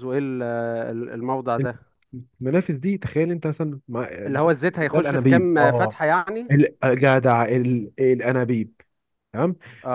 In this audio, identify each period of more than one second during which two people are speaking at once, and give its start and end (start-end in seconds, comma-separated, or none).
4.3-6.0